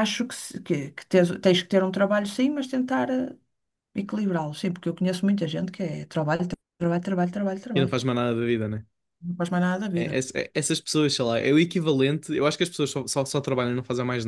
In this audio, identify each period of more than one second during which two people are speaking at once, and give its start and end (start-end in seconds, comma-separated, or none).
none